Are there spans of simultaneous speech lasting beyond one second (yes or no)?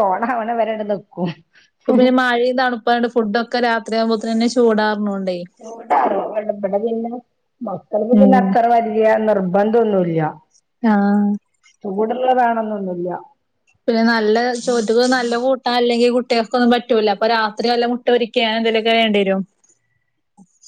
no